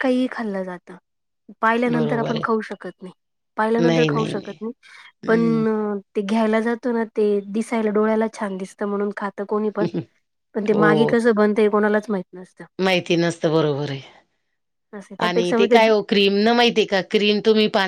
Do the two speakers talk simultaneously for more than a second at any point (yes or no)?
no